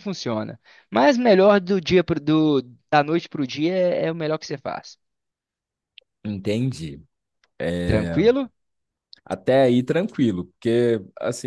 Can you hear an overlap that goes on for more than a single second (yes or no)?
no